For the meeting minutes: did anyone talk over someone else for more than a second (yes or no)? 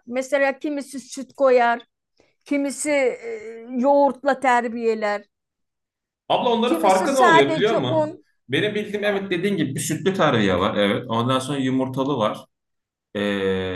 yes